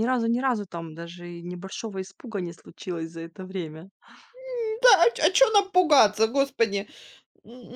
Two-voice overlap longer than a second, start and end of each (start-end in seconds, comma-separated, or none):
none